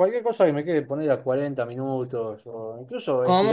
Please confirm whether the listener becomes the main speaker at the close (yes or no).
no